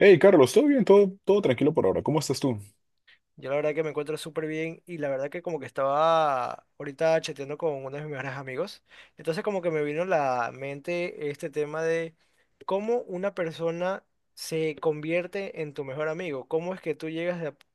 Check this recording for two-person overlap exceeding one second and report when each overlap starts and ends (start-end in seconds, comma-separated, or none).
none